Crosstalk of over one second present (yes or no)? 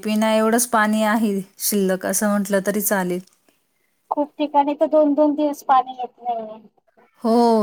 no